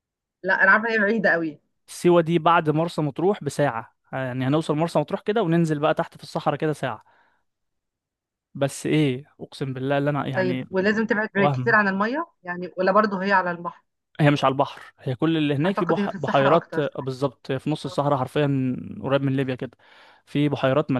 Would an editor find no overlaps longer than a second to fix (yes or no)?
no